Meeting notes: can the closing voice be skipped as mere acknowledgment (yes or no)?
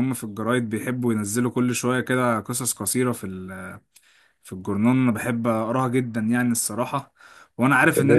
yes